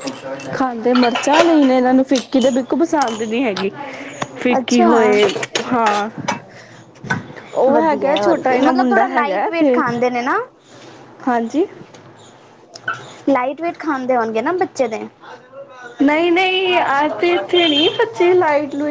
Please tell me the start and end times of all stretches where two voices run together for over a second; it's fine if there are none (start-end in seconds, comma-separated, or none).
7.7-9.4